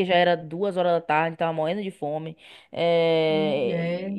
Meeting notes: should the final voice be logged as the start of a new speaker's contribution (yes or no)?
no